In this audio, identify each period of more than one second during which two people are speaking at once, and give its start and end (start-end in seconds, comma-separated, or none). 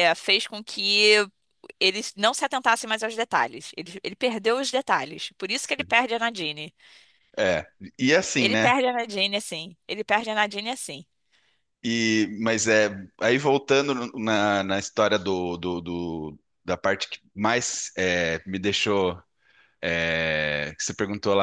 none